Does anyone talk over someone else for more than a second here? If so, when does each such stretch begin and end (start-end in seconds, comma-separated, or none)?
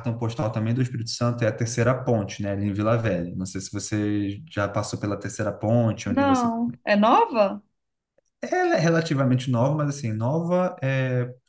none